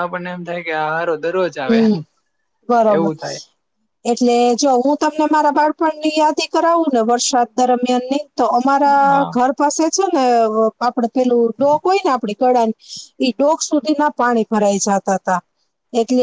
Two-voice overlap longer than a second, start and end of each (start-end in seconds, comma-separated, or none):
none